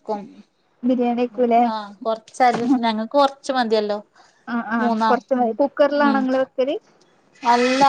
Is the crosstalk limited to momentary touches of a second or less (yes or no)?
yes